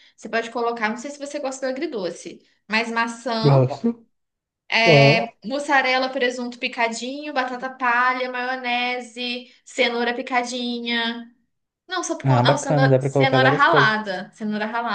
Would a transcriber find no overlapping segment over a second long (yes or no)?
no